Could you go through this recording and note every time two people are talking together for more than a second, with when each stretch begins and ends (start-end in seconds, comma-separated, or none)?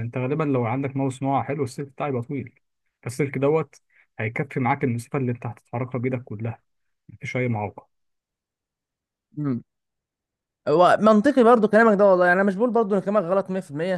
none